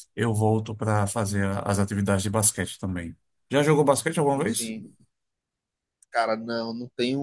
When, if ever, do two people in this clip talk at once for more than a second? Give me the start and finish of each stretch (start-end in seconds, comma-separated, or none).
none